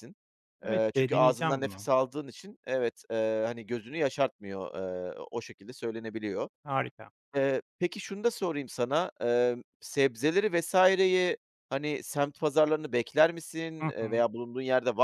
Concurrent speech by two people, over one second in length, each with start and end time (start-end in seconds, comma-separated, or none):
0.7-1.9